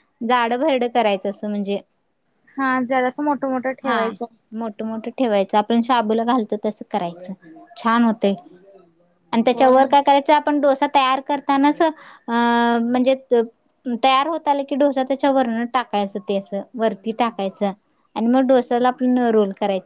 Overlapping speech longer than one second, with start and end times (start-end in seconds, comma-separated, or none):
none